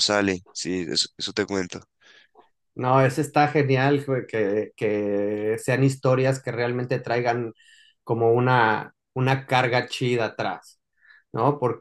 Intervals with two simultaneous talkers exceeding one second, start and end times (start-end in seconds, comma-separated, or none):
none